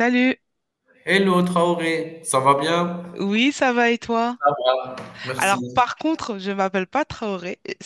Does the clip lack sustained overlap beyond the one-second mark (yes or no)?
yes